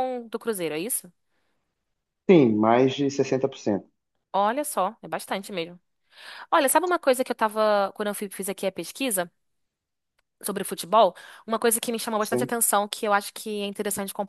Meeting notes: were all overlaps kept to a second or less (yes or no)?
yes